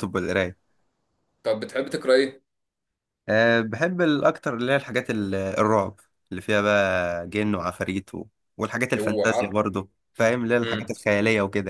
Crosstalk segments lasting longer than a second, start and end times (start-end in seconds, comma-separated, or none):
none